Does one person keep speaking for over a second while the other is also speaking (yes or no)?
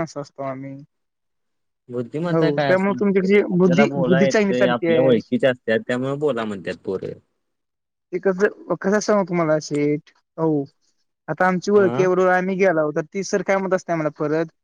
yes